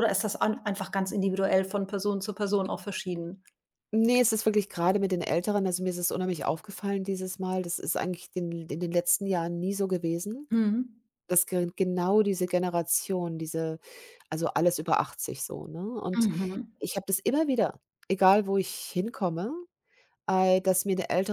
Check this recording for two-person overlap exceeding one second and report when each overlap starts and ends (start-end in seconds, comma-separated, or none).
none